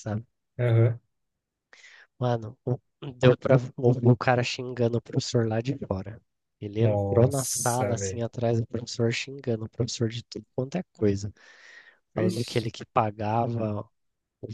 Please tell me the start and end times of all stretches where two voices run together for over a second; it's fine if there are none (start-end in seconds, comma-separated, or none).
6.8-8.2